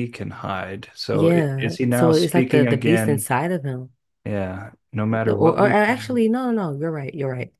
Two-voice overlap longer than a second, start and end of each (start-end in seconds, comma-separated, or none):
1.1-3.3